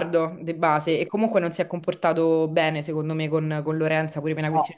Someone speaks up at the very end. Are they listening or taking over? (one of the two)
listening